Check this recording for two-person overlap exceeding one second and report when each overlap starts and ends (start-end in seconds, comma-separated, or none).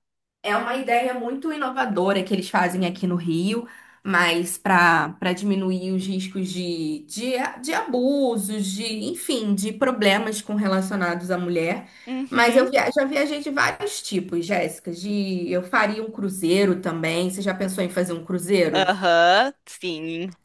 none